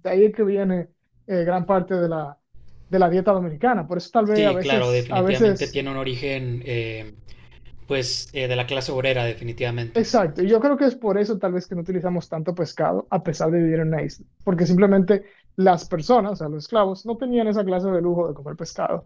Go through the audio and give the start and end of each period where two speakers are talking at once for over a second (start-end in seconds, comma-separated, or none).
4.2-5.8